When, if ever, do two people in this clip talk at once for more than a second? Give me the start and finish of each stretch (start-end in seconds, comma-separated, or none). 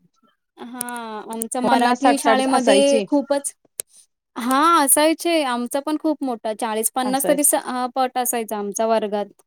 1.7-3.0